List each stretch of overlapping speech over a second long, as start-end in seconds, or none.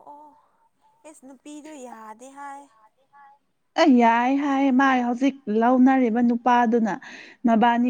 none